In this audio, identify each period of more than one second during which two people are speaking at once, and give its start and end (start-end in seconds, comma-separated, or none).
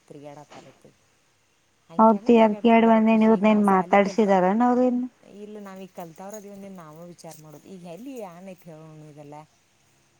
2.0-4.3